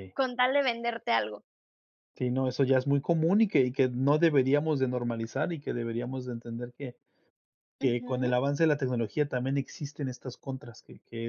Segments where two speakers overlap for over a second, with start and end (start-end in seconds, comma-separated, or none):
none